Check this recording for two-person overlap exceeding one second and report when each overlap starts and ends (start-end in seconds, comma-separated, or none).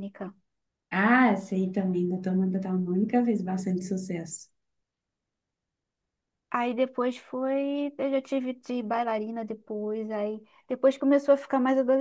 none